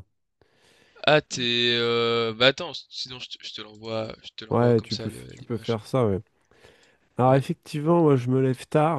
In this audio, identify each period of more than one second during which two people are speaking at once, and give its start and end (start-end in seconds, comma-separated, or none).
4.5-5.8